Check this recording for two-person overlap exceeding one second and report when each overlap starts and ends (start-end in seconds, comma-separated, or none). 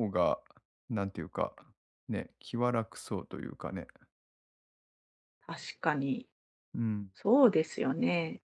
none